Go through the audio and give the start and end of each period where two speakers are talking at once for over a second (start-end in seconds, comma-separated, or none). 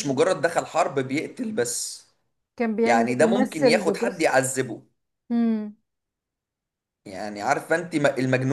2.8-4.3